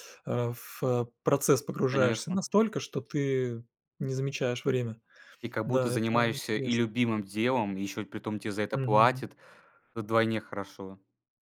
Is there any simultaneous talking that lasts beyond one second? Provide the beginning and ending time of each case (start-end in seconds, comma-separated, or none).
5.7-6.8